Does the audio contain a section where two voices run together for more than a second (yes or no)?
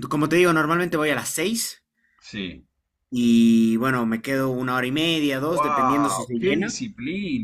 yes